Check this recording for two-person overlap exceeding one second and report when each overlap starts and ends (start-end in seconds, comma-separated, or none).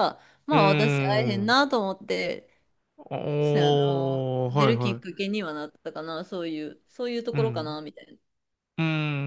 3.4-5.0